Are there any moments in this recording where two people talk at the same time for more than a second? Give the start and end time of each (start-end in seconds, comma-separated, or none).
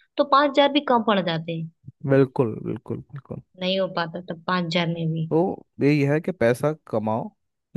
none